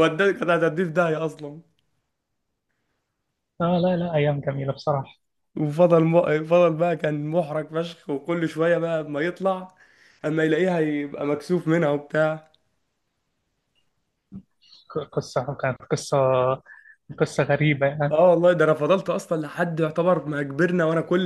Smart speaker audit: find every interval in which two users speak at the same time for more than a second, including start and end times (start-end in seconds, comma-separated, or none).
none